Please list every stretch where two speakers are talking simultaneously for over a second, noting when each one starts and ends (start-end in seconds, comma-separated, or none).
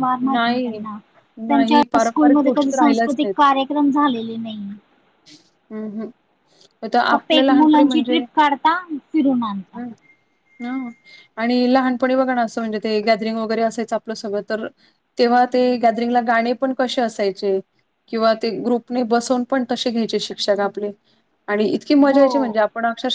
1.5-3.1